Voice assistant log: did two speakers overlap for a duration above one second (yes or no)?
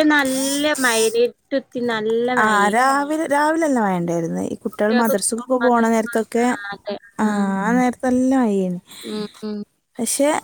yes